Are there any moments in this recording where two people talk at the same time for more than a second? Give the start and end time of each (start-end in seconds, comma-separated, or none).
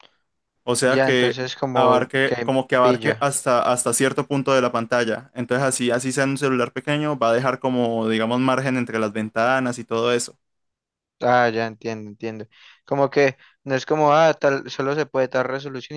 0.8-3.3